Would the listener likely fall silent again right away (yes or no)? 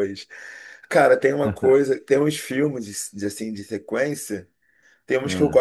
yes